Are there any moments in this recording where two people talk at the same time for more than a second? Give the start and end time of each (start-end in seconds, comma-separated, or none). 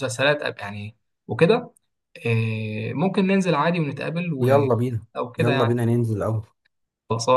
none